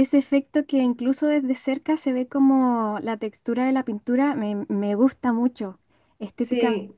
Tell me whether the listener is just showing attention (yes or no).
yes